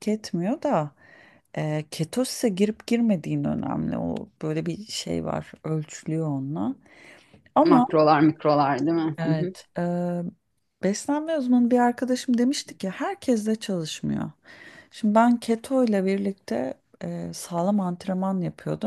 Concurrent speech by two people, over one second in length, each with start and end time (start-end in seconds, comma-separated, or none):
none